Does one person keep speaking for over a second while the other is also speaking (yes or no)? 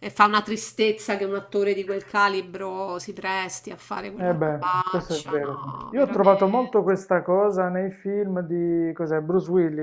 yes